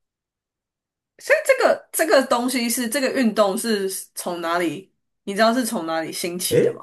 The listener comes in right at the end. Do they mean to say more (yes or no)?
yes